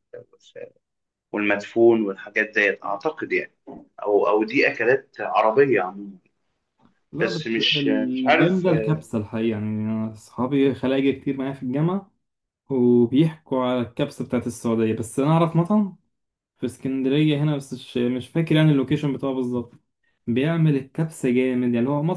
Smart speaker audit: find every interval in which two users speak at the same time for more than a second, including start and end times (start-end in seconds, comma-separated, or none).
7.2-8.7